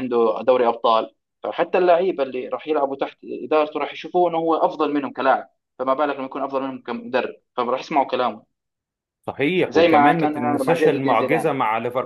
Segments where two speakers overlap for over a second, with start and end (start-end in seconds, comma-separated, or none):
9.7-11.5